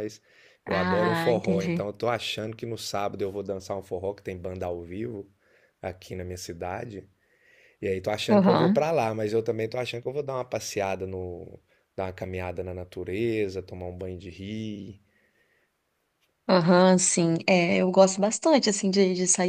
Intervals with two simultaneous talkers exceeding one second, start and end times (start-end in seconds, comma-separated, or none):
0.7-1.9